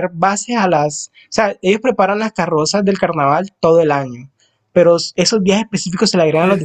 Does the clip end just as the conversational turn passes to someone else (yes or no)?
no